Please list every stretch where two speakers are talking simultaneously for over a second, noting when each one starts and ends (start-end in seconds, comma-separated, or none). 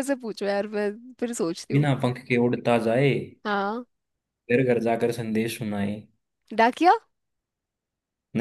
none